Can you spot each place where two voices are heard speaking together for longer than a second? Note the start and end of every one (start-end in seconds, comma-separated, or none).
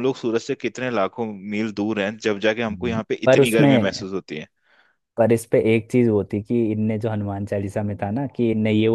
2.7-4.0